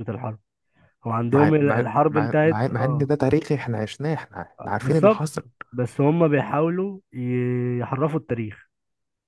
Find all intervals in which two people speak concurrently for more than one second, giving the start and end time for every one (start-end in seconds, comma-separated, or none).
1.3-3.1